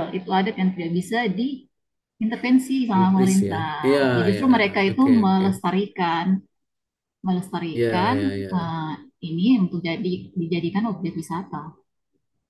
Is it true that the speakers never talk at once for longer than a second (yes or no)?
no